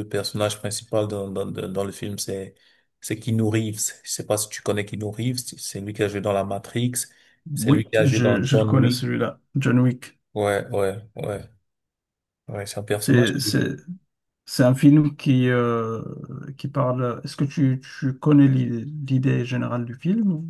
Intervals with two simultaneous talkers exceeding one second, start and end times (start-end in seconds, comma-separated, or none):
7.6-9.0